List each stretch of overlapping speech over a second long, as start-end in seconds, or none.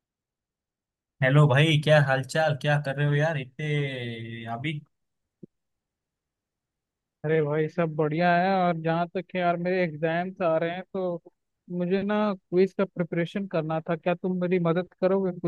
none